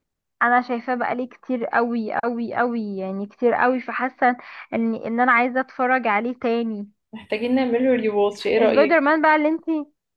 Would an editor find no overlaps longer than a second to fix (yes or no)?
yes